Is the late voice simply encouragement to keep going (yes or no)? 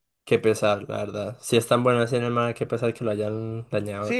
no